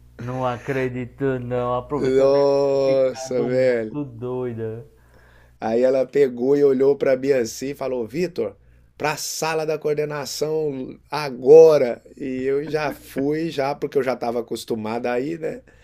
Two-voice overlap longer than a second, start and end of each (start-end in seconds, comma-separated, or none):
1.9-4.0